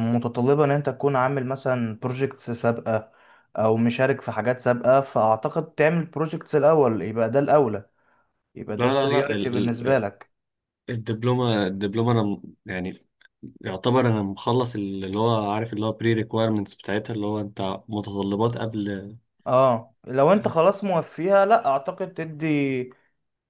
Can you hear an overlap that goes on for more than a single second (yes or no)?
yes